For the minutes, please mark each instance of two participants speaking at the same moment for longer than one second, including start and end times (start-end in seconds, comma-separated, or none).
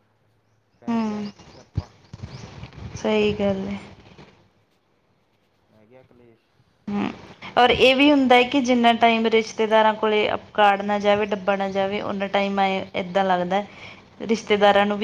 none